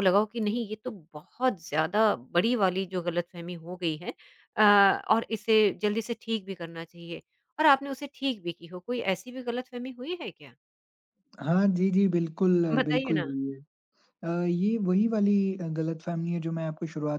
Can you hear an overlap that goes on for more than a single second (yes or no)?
no